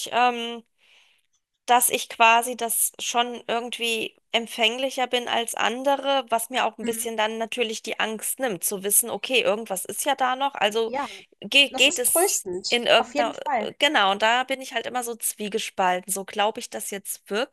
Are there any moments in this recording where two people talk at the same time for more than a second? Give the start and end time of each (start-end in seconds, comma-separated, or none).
11.7-13.4